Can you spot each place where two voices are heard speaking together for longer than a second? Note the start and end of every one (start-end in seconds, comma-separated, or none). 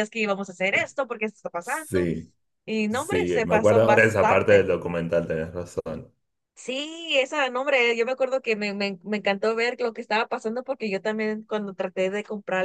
2.9-4.7